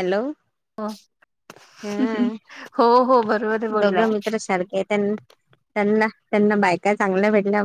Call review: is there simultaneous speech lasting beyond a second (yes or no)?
no